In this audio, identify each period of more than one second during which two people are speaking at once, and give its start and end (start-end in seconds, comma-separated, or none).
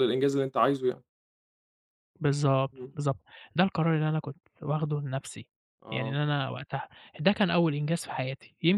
none